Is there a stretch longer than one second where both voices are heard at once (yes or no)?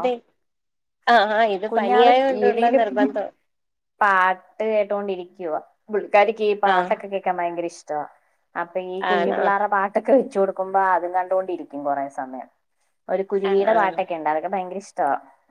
yes